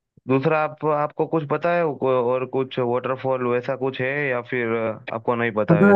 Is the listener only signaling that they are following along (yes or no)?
no